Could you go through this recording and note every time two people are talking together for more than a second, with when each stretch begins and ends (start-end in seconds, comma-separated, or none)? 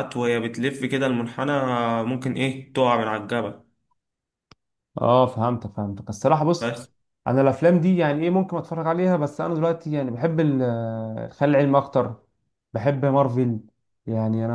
none